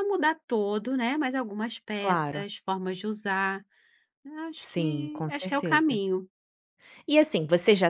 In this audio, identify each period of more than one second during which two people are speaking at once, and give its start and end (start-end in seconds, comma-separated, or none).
4.5-6.0